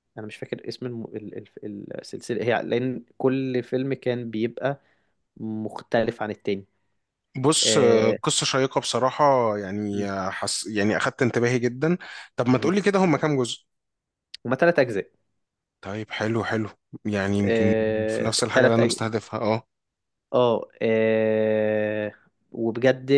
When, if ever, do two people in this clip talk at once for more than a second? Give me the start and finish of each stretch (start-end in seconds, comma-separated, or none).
17.4-18.9